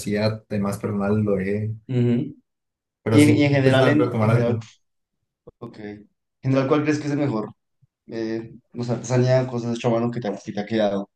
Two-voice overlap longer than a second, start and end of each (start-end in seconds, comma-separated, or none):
3.1-4.6